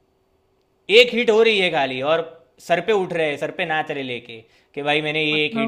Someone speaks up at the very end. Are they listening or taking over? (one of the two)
listening